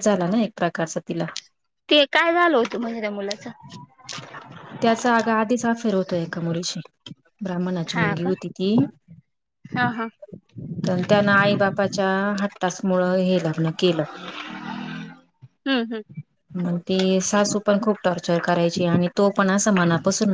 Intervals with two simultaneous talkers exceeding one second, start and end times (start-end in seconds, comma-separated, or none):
none